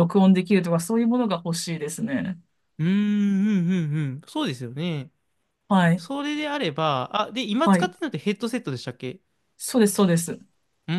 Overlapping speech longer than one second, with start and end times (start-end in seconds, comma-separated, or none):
none